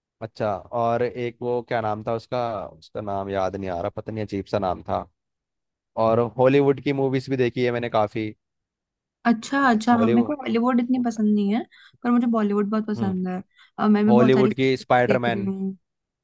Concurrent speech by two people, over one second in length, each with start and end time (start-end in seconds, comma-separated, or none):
14.1-15.5